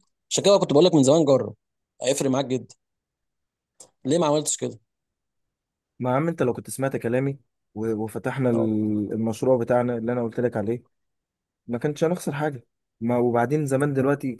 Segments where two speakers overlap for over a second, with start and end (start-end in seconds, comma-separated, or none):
none